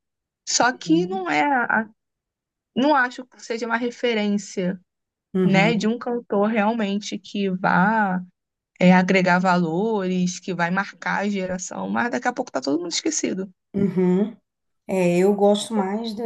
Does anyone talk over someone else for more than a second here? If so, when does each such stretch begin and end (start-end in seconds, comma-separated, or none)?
none